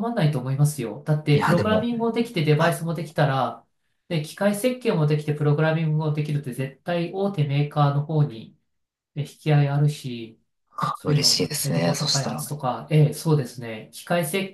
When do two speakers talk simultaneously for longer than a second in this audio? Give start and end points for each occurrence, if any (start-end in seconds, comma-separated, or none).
11.0-12.5